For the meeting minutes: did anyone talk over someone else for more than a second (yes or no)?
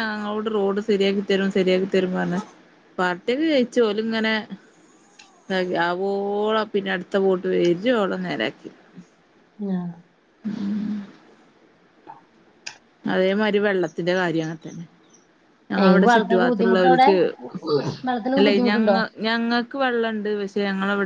yes